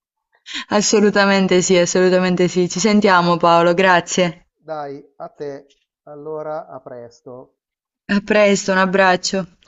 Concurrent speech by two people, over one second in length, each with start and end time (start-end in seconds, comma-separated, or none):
none